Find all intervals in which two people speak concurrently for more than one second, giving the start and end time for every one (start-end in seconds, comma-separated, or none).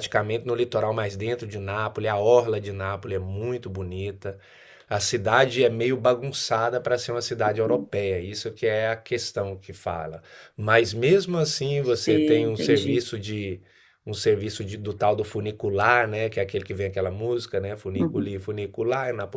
11.8-13.0